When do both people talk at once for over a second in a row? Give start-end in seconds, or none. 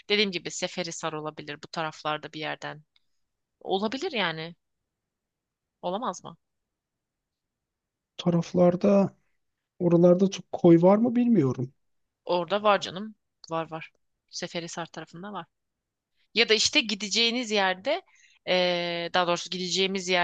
none